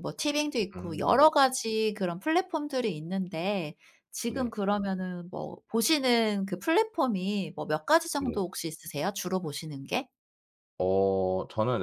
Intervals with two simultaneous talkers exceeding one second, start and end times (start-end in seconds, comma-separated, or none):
none